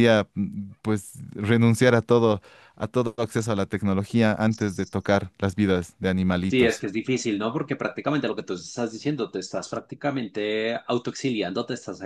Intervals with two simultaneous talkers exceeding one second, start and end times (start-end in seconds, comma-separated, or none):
none